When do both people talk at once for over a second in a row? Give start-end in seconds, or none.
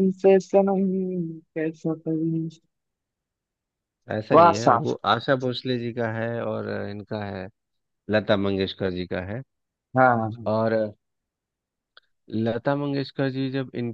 none